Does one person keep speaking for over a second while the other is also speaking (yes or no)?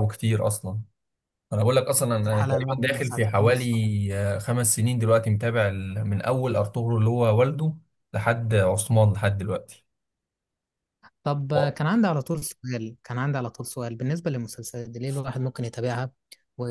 yes